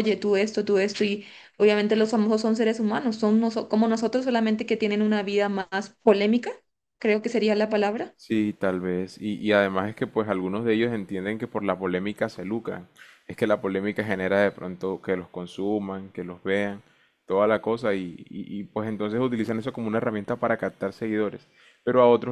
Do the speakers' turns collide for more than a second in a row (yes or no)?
no